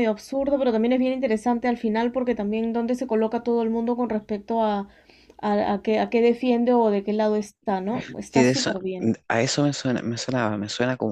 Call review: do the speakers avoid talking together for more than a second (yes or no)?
yes